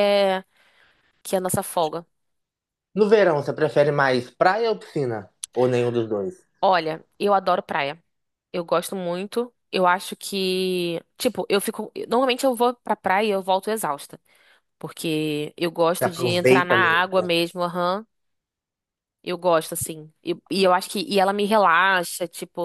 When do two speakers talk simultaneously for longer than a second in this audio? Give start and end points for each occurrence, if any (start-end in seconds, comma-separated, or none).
16.0-17.3